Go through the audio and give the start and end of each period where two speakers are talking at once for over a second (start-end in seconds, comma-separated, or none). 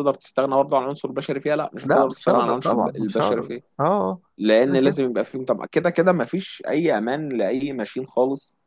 1.8-3.6